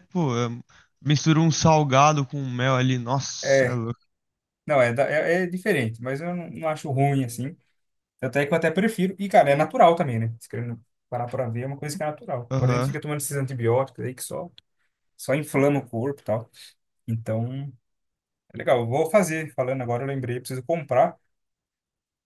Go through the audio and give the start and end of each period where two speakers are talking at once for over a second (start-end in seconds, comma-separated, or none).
none